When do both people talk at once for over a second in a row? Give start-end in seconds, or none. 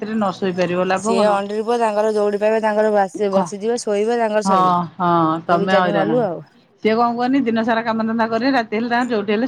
4.4-6.1